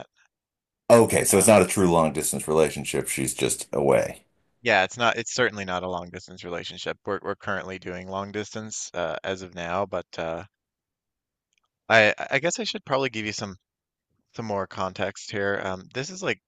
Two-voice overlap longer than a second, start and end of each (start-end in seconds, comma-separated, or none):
none